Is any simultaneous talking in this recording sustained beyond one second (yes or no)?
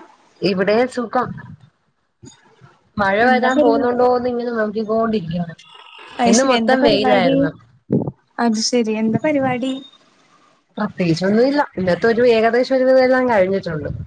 no